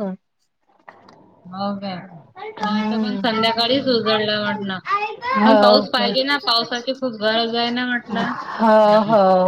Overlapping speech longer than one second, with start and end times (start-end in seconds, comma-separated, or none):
5.4-6.7